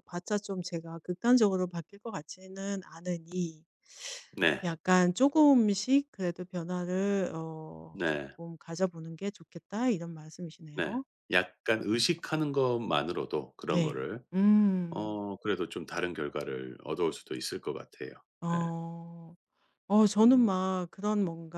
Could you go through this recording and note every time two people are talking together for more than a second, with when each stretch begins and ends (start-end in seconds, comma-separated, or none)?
none